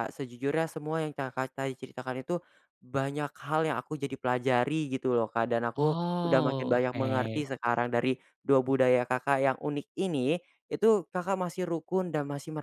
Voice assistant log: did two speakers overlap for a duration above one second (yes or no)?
yes